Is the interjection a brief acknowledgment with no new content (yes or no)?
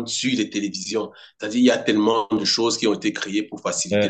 no